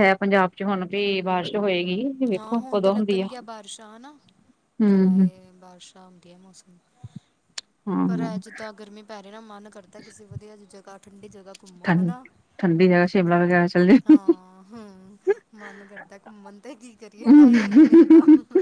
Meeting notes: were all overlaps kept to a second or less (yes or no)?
yes